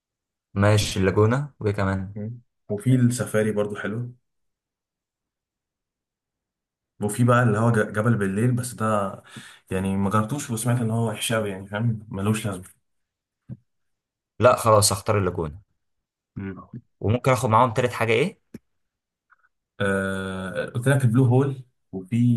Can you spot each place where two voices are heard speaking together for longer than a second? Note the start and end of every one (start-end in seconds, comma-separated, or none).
none